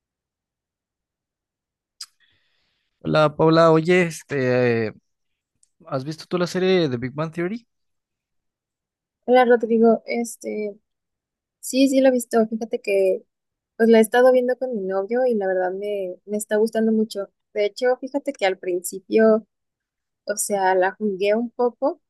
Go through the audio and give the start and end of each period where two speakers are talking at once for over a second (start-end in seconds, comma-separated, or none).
none